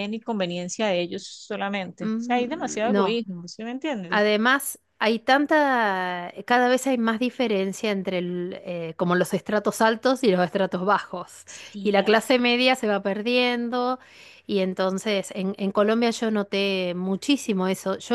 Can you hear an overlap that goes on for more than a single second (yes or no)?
yes